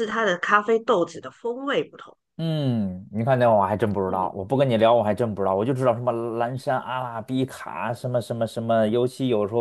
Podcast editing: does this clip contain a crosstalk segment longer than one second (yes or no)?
no